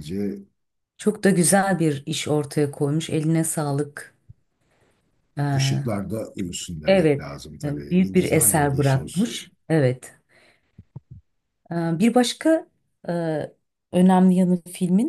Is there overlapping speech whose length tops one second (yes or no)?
yes